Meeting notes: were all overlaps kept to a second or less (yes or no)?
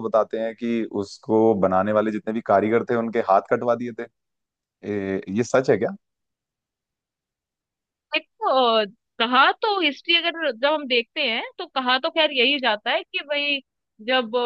yes